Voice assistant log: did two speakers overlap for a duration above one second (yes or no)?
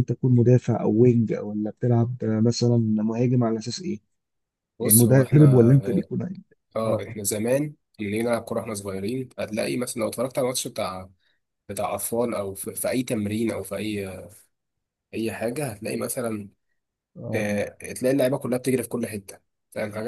yes